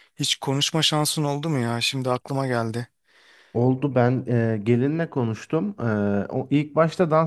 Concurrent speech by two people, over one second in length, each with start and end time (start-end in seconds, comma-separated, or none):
none